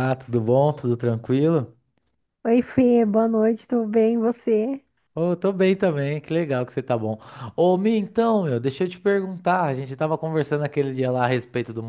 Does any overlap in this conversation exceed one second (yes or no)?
no